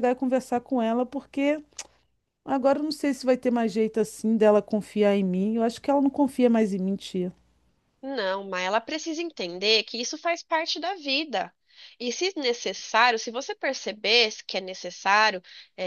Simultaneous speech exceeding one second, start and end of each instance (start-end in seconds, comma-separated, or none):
none